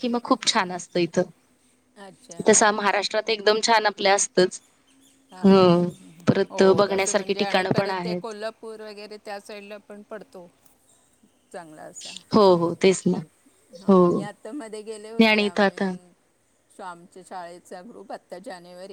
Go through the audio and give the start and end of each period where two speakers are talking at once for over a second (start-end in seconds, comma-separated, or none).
6.5-8.3